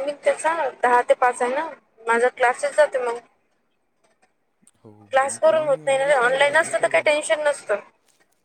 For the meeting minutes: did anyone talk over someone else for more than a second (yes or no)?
yes